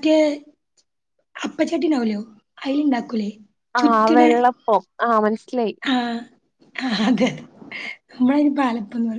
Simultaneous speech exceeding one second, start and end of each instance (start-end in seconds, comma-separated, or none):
none